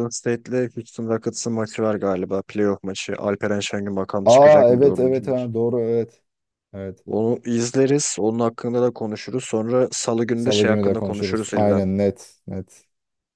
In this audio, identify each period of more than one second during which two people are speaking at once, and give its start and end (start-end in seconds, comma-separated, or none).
4.2-5.5, 10.3-11.8